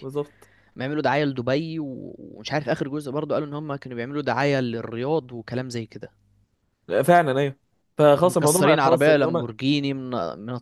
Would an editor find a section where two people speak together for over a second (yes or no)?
yes